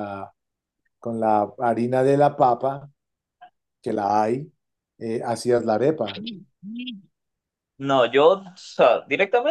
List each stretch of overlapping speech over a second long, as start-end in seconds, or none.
none